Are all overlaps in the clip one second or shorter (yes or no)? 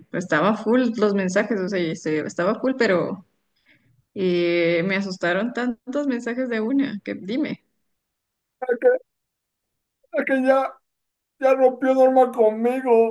yes